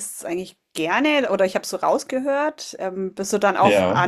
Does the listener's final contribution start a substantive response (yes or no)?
no